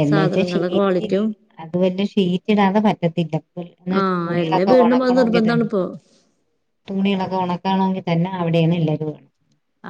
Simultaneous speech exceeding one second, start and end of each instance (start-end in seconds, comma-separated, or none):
4.0-5.7